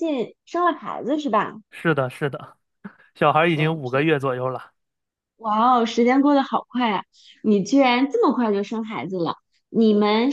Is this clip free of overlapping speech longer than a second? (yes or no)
yes